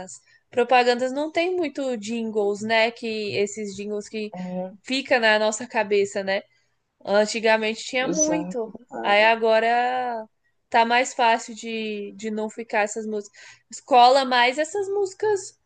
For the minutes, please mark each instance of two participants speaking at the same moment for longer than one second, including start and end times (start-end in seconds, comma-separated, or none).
8.0-9.3